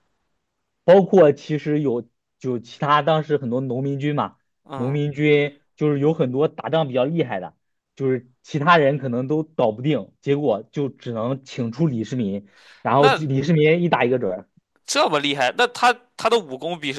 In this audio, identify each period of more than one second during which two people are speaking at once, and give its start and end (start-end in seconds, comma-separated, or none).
none